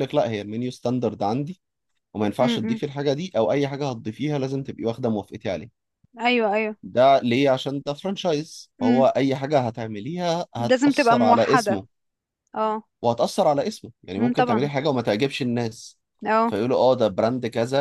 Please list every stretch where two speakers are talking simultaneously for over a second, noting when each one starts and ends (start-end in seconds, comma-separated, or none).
10.6-11.8